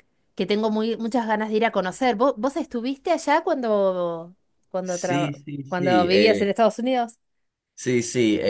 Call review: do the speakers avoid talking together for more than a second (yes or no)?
no